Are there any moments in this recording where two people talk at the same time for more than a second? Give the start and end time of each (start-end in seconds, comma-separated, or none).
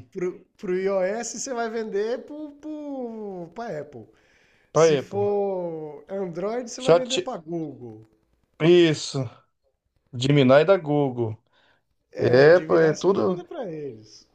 12.2-13.4